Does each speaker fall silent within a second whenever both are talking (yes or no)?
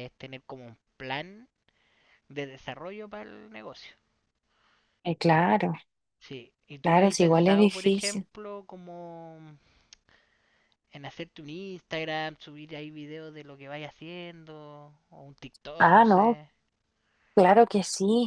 no